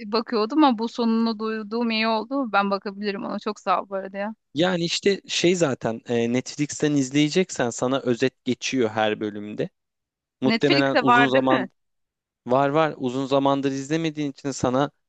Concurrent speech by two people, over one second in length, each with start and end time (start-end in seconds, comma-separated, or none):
10.4-11.7